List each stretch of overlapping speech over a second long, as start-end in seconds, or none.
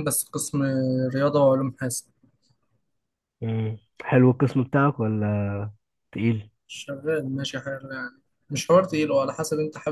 none